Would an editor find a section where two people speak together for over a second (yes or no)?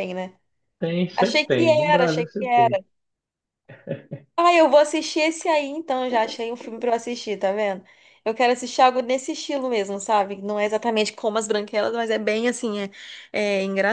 yes